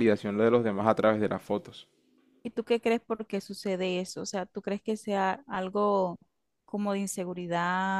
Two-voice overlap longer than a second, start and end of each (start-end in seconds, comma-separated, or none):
none